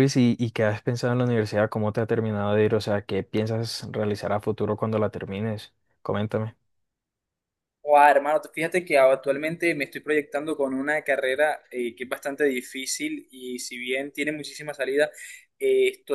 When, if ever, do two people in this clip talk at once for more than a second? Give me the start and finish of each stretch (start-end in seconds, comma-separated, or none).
none